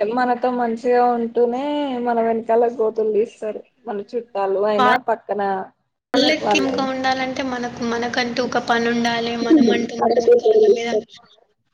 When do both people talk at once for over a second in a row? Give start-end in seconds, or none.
none